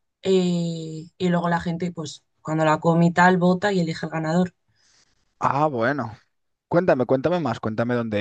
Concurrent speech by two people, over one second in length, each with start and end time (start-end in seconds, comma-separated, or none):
none